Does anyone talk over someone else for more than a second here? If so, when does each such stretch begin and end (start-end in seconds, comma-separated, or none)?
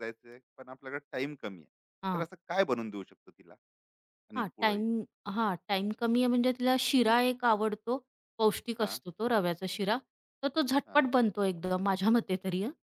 none